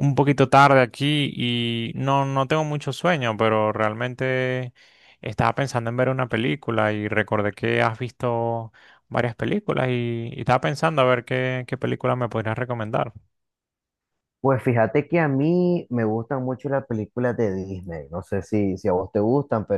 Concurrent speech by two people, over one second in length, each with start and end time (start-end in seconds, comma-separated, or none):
none